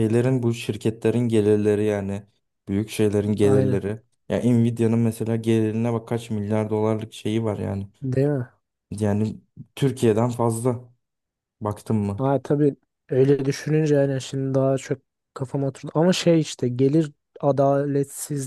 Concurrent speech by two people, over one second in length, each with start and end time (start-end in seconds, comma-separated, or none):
none